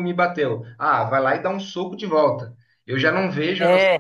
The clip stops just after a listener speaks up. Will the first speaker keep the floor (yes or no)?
yes